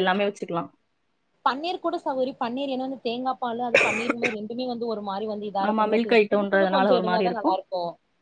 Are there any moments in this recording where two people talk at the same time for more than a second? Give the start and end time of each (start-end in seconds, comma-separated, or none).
5.7-7.2